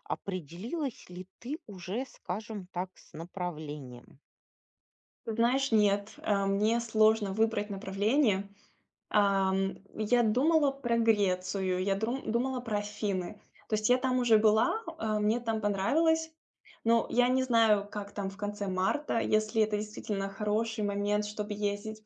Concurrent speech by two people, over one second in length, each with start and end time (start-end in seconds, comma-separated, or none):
none